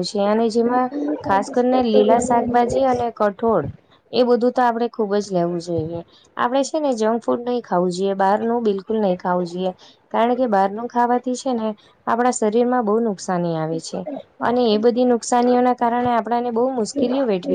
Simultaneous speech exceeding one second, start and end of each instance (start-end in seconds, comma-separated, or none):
1.4-2.9